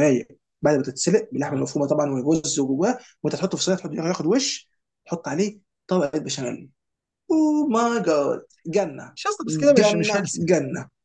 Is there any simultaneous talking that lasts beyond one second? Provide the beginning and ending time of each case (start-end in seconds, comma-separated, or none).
9.2-10.5